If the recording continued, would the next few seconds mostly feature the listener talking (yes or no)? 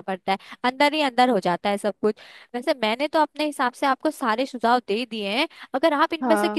no